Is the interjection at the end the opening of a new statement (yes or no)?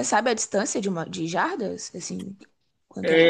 yes